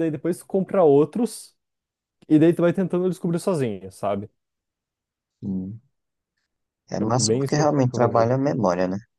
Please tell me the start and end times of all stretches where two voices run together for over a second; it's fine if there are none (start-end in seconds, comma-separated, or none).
7.0-8.3